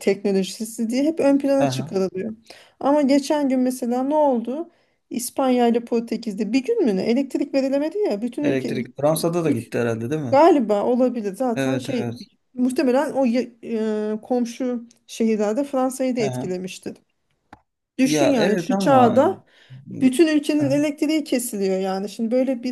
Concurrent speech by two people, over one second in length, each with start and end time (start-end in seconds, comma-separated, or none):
18.0-19.4